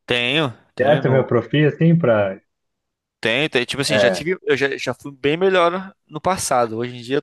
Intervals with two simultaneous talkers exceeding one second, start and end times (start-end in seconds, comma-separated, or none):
none